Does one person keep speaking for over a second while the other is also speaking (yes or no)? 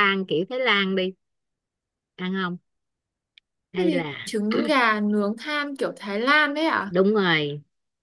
no